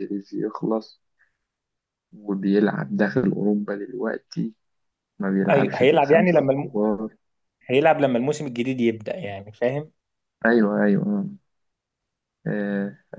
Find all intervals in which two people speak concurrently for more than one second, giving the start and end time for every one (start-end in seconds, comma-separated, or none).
5.5-6.7